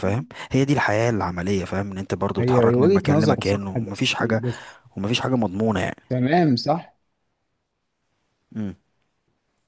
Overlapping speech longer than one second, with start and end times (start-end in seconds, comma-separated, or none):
2.4-4.4